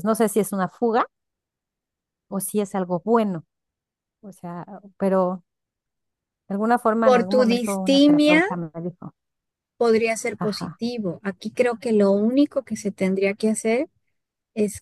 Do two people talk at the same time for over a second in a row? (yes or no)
yes